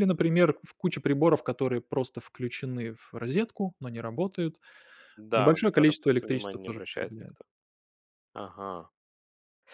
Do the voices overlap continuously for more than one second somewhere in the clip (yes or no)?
yes